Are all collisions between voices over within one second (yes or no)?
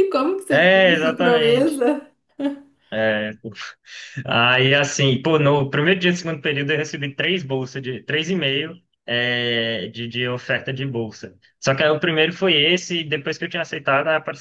no